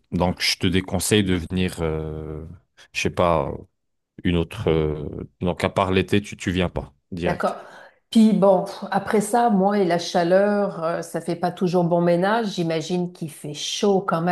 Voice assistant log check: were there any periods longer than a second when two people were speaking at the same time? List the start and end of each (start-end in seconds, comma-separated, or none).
none